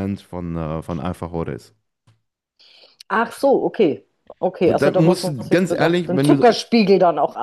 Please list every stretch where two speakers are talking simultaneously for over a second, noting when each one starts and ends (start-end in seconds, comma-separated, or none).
4.6-6.6